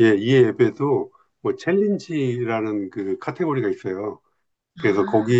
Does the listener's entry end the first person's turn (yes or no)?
no